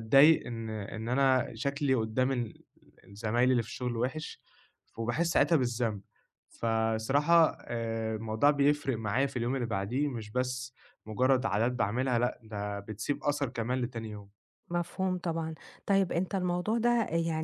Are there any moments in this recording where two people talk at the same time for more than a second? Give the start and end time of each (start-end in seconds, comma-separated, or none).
none